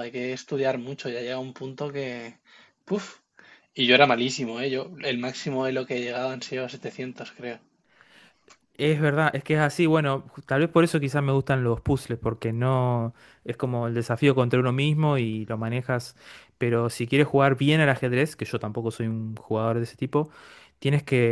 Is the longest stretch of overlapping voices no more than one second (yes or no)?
yes